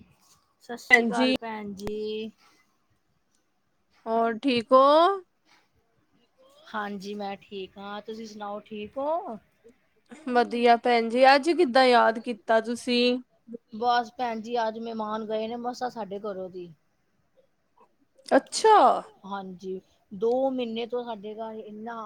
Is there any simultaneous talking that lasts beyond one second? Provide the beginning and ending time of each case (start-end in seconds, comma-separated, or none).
none